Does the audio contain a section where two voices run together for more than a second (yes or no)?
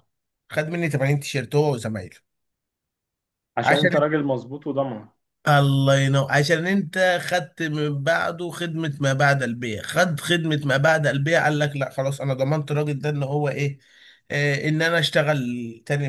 no